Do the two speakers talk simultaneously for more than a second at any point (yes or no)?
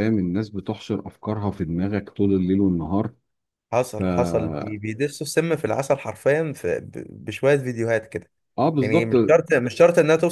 no